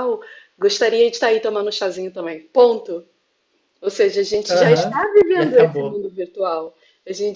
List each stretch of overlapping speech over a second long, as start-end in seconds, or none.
4.5-6.0